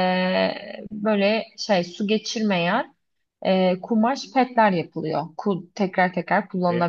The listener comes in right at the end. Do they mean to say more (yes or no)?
yes